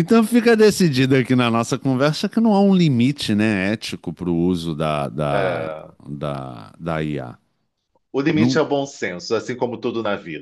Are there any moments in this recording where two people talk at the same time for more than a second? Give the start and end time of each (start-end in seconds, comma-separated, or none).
none